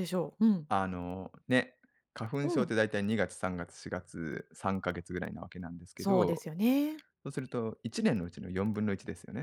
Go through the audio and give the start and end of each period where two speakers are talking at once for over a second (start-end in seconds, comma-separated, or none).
none